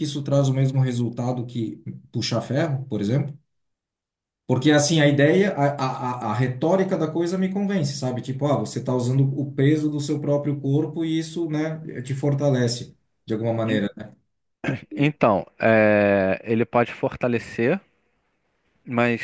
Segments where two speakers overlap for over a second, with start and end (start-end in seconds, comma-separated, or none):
none